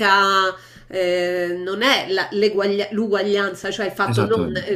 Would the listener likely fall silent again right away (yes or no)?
yes